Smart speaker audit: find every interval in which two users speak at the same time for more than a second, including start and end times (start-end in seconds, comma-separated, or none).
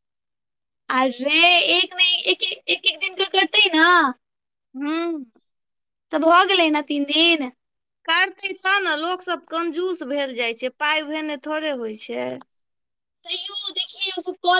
none